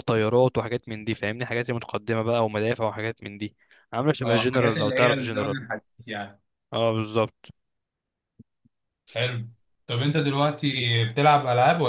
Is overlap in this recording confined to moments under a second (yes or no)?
no